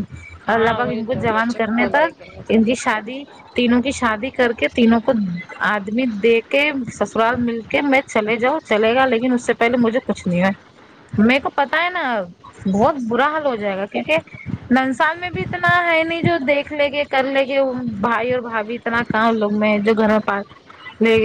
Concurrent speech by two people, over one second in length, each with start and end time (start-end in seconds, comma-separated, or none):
0.5-2.4